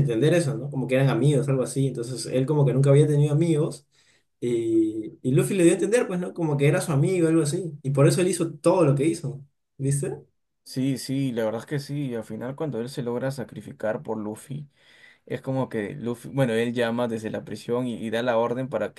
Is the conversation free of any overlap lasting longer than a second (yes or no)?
yes